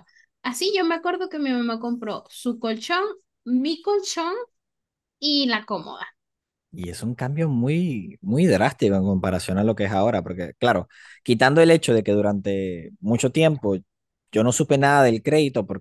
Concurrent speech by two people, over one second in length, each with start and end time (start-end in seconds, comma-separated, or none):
none